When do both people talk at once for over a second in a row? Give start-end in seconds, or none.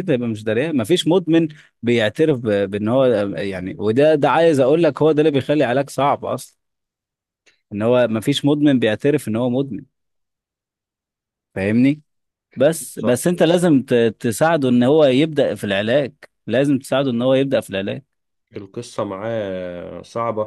none